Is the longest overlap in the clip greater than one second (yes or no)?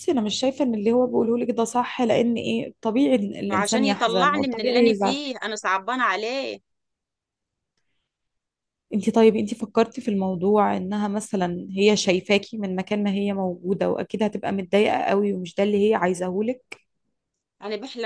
yes